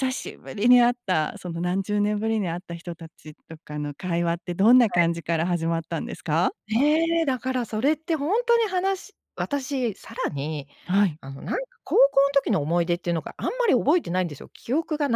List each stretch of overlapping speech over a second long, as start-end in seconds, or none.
none